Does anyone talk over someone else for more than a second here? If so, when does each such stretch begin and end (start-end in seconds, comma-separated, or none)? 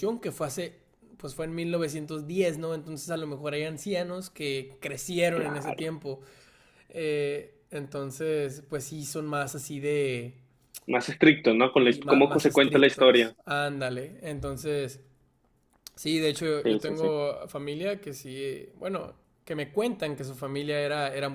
11.8-13.3